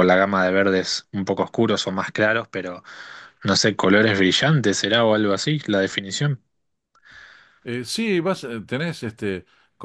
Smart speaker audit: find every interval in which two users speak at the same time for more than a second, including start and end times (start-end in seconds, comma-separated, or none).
none